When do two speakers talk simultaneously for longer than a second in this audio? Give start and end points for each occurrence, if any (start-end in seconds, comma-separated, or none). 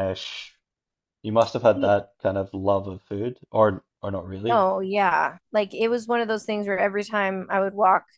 none